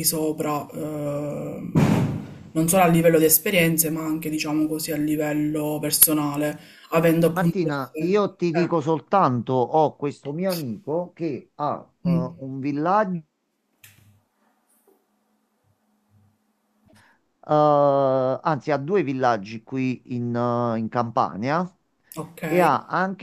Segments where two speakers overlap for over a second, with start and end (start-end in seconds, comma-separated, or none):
7.3-8.8